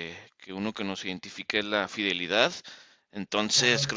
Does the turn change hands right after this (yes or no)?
no